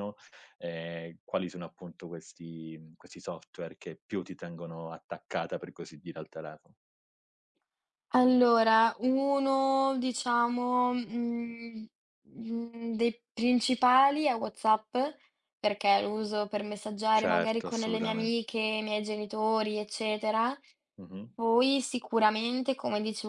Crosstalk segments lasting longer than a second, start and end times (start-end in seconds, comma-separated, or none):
17.1-18.5